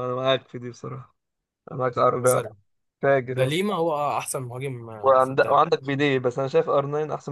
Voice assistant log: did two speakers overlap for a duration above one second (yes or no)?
no